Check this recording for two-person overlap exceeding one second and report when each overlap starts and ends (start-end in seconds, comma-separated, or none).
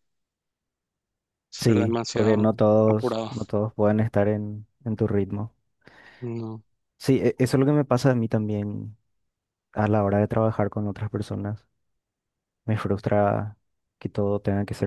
1.6-3.3